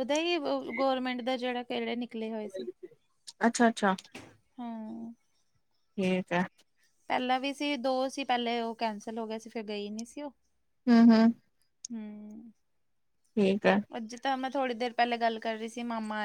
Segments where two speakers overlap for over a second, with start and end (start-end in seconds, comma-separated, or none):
none